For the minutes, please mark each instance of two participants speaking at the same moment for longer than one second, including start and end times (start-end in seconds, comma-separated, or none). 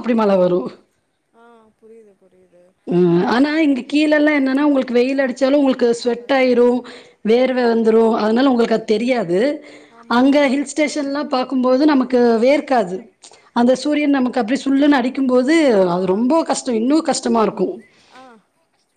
4.6-6.7